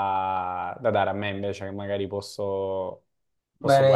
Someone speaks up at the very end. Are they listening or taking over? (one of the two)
taking over